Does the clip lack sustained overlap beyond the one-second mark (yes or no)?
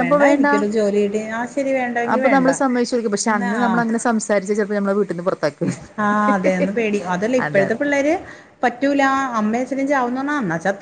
yes